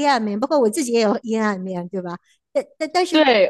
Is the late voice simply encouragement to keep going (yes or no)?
yes